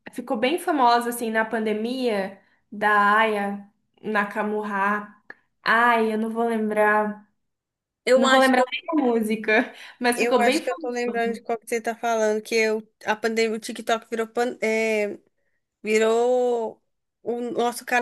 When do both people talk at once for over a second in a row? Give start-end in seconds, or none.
10.2-11.4